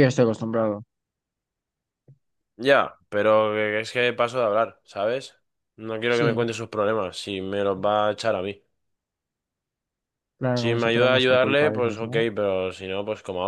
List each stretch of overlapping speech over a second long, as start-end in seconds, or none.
10.6-12.3